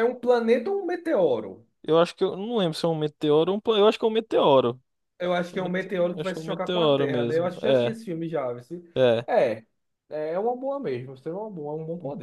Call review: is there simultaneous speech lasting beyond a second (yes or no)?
yes